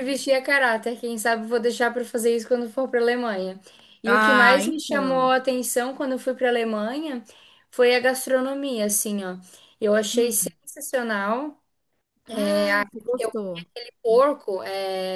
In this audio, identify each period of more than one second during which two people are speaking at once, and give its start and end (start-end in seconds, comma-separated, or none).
4.0-5.3